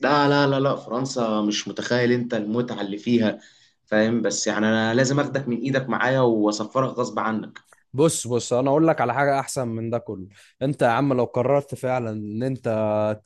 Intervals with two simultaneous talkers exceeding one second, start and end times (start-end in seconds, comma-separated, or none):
none